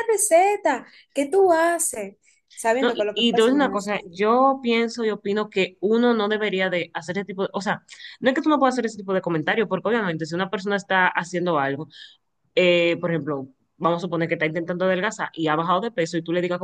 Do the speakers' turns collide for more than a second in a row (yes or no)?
yes